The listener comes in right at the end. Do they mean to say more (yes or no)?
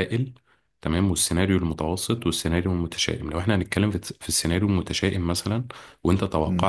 no